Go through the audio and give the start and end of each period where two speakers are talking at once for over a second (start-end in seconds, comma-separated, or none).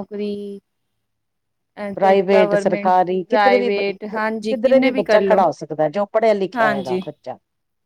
2.0-5.4